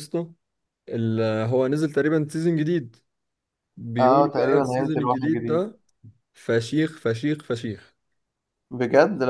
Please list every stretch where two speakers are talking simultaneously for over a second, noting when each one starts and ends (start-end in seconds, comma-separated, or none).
4.0-5.6